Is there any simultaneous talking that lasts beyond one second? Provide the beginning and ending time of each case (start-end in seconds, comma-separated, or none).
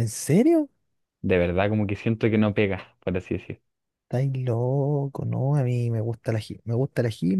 none